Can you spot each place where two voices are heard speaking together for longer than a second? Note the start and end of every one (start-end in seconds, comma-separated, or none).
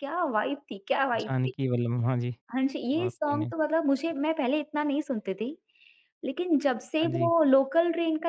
none